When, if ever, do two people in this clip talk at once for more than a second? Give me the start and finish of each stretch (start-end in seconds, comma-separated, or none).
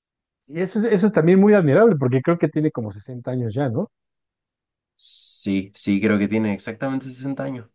none